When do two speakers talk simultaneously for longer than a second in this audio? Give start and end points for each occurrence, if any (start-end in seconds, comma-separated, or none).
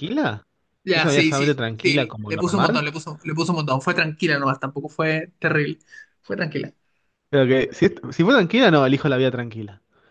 0.9-2.9